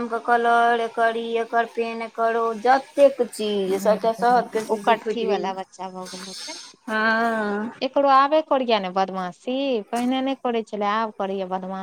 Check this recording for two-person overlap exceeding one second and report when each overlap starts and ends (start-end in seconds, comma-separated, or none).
3.7-5.5